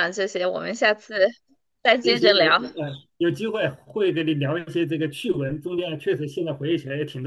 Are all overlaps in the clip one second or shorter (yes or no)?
yes